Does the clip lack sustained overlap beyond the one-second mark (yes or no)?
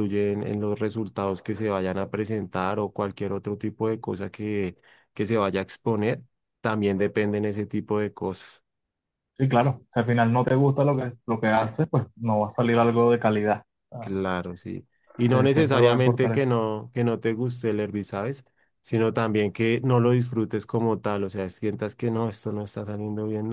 no